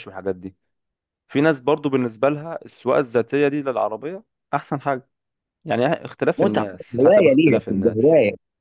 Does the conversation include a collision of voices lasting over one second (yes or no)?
yes